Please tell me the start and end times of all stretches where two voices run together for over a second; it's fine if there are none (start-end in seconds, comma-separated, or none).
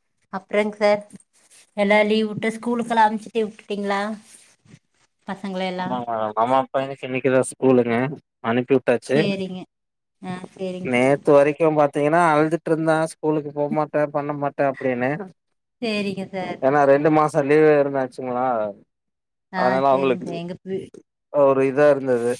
none